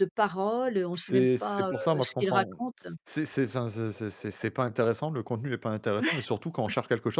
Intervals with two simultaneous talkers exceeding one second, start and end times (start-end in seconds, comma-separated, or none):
0.9-2.6